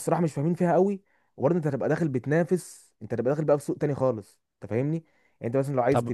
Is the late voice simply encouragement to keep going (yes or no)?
yes